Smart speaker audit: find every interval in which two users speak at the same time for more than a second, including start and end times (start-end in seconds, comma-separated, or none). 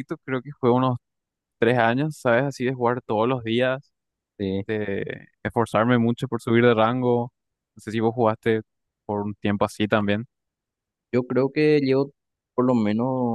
none